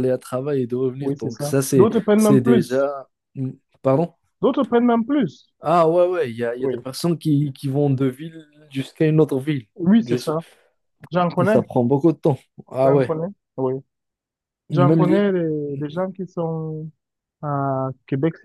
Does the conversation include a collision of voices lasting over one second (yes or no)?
yes